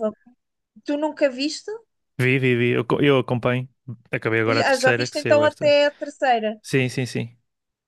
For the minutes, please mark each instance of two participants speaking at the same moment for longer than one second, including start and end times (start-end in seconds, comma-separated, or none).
4.5-5.7